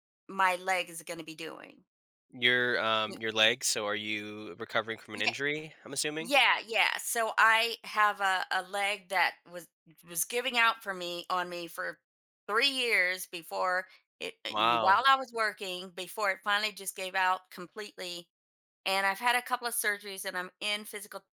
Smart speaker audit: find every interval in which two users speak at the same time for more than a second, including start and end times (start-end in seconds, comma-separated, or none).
none